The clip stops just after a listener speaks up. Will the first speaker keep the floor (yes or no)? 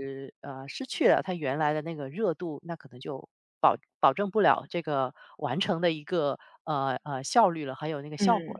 no